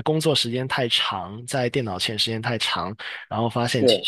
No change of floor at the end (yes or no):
yes